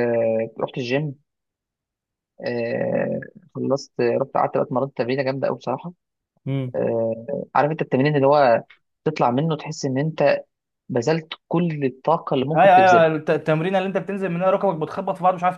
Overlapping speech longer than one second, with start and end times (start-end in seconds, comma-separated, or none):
none